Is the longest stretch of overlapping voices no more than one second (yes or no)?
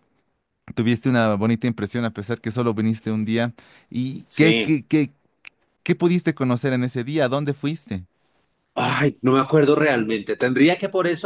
yes